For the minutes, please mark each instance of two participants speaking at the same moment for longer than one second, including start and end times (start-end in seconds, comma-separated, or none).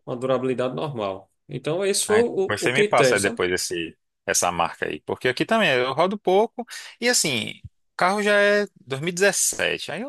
2.1-3.4